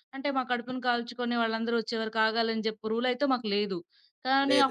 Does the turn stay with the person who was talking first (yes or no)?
yes